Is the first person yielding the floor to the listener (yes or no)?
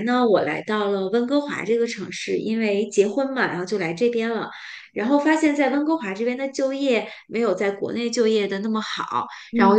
no